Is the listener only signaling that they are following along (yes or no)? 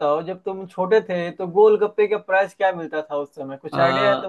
no